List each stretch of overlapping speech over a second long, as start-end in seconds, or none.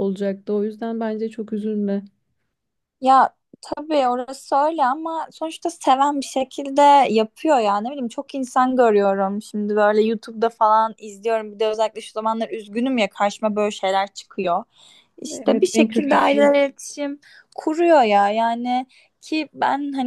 15.3-16.5